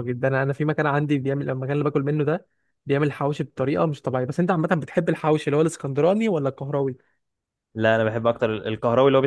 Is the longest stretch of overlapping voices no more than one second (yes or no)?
yes